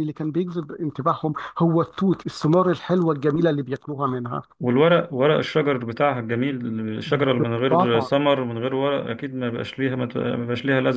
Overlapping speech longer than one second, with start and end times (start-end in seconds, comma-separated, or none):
none